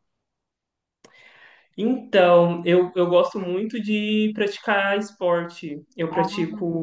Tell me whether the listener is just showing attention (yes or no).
yes